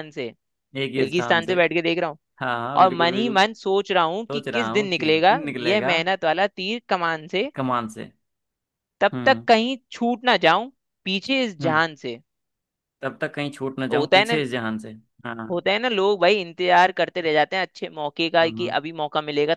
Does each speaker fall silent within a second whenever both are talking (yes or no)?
no